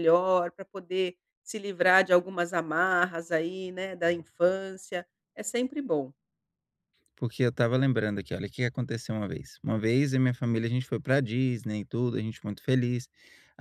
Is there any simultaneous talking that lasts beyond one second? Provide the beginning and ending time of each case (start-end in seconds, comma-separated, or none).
none